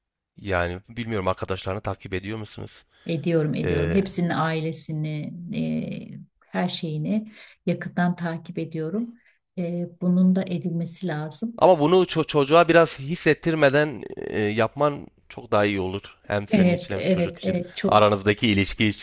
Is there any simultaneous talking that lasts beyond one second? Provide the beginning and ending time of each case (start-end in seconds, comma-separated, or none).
16.5-18.1